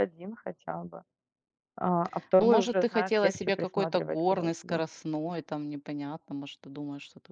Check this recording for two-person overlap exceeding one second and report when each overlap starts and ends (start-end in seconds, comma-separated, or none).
2.4-5.0